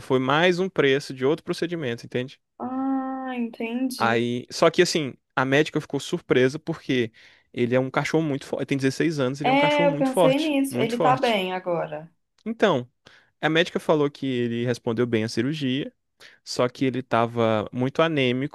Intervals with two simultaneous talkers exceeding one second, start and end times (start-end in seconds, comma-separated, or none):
9.4-11.4